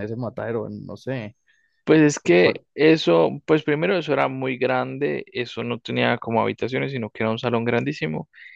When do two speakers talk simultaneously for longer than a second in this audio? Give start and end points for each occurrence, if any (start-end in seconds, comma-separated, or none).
none